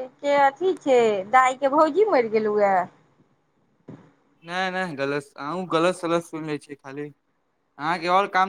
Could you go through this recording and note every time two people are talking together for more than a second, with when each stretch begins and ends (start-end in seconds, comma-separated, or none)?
none